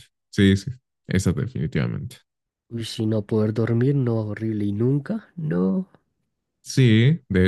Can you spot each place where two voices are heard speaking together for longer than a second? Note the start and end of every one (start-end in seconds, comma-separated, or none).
none